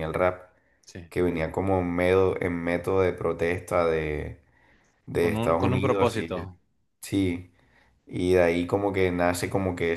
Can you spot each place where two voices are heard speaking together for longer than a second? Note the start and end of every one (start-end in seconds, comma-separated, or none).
5.2-6.5